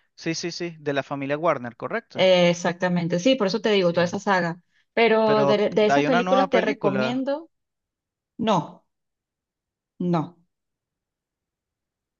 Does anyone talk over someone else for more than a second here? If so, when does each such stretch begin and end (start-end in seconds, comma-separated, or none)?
5.2-7.2